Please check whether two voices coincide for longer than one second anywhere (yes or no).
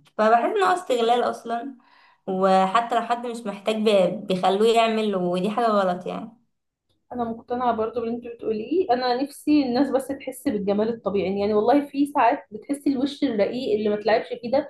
no